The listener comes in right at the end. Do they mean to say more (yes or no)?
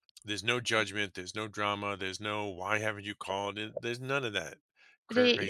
yes